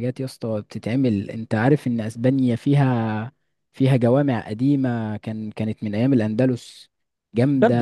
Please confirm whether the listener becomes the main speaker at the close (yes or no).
no